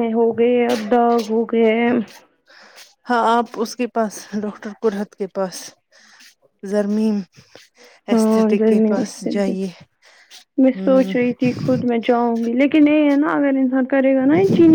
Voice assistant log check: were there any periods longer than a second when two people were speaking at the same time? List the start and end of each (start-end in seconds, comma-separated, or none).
8.1-9.5